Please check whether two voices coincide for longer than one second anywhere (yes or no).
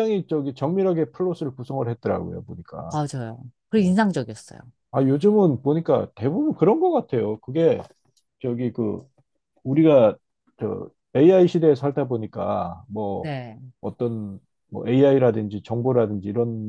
no